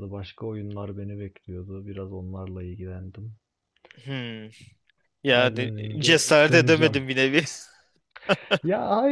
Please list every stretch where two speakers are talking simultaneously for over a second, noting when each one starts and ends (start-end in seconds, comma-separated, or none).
5.3-7.0